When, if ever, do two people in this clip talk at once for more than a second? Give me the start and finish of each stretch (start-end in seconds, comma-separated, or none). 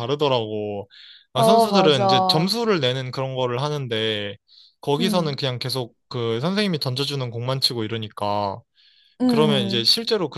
1.3-2.5